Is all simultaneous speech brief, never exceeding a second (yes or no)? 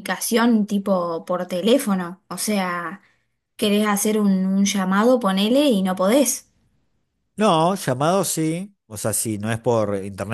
yes